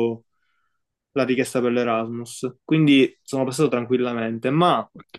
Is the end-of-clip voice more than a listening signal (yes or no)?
no